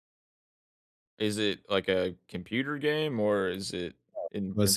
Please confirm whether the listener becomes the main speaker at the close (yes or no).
yes